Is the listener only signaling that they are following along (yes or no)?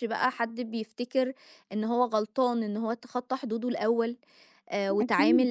no